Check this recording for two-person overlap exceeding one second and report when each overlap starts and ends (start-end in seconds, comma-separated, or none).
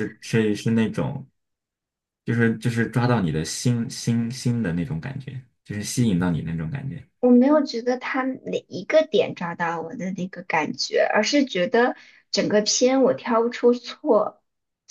none